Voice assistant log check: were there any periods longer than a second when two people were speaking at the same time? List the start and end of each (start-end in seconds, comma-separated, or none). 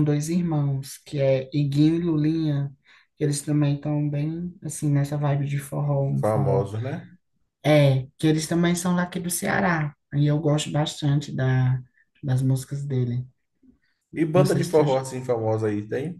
none